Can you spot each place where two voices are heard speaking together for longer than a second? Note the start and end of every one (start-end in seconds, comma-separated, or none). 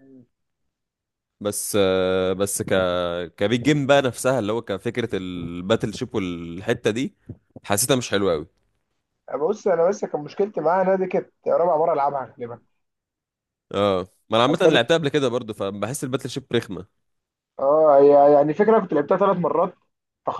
none